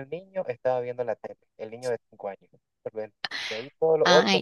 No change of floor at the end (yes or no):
no